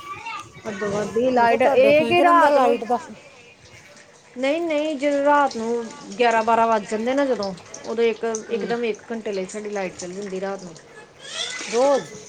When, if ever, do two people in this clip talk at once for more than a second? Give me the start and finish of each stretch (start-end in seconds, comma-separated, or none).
1.4-2.8